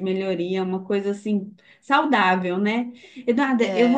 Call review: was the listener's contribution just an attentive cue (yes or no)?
yes